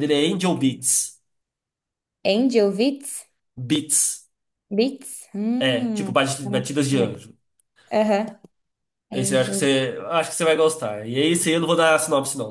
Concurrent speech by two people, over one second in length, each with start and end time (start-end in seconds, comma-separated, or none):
5.6-7.2